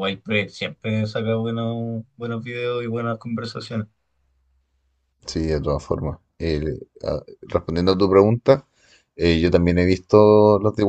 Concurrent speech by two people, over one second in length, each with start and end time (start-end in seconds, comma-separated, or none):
none